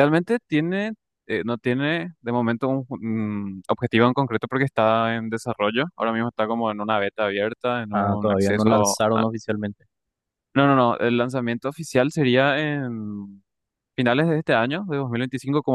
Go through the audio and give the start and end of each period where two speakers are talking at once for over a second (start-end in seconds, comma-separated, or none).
7.9-9.2